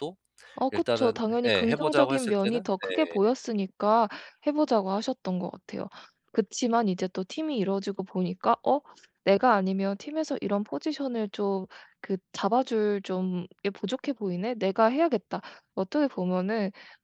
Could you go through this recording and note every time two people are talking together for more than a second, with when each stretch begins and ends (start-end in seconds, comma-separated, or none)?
0.7-3.3